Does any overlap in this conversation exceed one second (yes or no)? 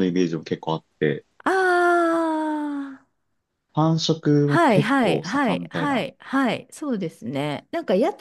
yes